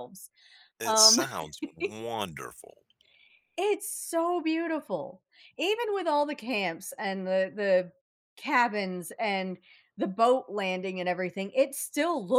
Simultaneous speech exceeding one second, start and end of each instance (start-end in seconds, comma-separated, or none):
none